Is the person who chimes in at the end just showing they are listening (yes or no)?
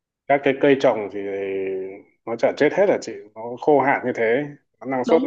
no